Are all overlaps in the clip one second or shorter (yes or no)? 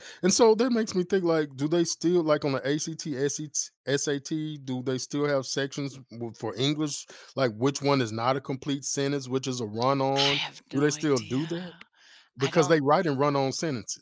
no